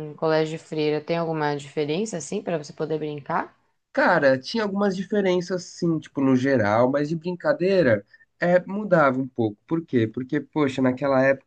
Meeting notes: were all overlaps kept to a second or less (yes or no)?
yes